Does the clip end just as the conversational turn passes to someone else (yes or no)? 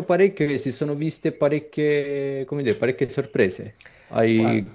no